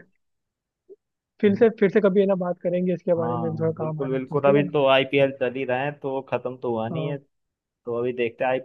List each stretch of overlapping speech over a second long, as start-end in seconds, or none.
3.2-4.7